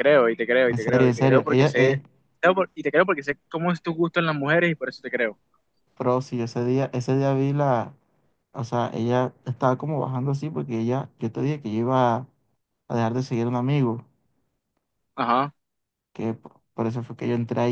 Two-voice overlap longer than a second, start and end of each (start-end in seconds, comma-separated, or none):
0.7-2.0